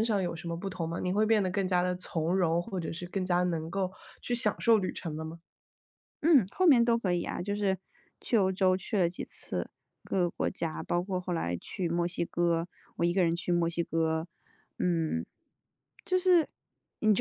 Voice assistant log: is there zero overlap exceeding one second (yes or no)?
yes